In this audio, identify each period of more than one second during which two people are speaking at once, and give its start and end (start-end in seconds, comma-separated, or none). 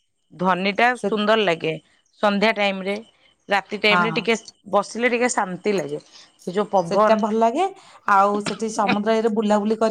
none